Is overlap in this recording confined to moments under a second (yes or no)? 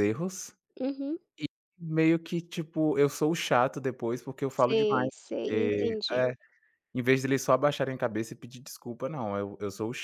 no